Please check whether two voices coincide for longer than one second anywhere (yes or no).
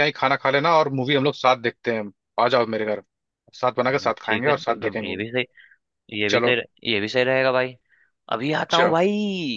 yes